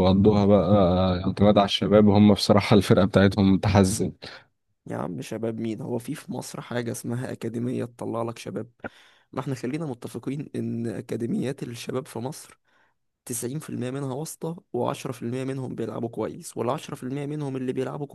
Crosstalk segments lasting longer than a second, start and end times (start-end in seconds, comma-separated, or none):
none